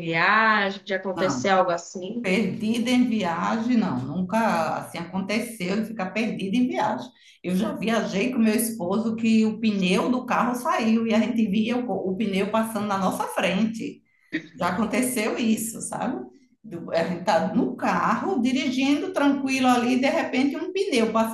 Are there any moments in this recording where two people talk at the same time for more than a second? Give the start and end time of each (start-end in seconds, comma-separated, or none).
none